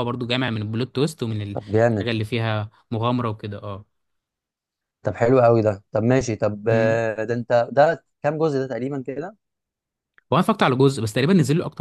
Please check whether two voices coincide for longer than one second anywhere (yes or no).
no